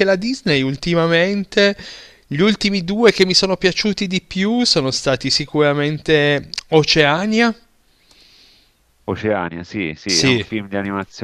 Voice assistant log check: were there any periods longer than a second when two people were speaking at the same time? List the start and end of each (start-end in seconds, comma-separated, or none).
none